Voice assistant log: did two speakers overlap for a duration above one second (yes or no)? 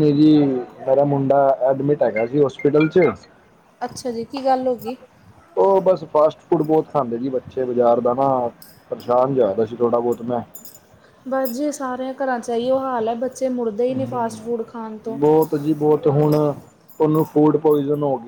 no